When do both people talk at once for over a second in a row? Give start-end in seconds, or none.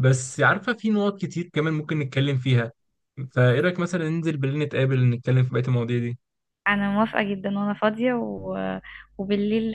none